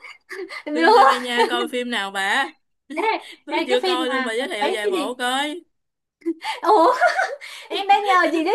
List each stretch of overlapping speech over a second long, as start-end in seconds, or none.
3.6-5.2